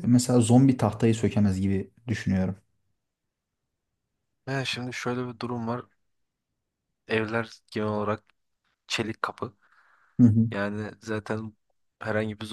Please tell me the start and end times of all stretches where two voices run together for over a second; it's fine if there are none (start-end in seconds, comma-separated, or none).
none